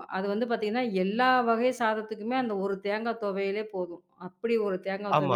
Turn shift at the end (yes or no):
yes